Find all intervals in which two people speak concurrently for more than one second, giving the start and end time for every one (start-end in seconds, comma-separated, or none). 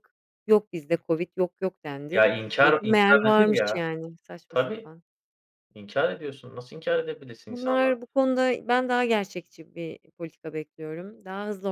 2.1-3.8